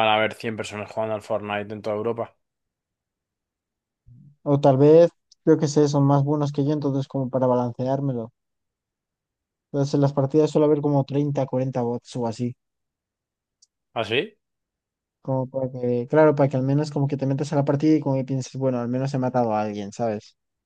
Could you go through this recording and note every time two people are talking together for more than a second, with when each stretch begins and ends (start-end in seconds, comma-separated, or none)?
none